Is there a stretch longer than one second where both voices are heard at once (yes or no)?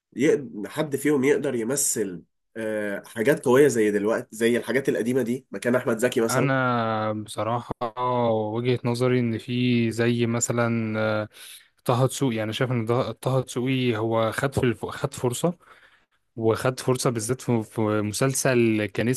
no